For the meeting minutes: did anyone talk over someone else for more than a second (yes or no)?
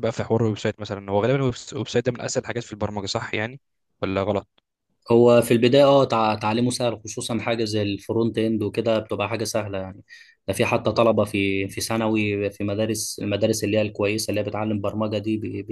no